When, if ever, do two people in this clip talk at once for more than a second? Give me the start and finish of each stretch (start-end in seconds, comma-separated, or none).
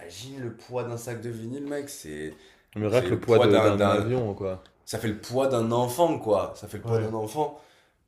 2.9-4.1